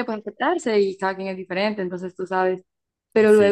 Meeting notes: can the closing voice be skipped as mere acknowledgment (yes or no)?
yes